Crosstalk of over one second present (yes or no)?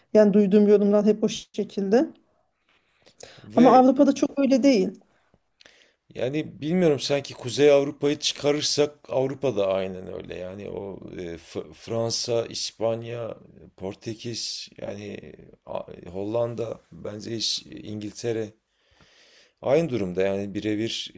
no